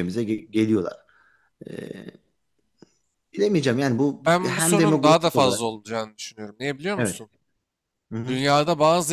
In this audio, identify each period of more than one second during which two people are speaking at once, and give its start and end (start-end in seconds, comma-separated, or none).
4.2-5.6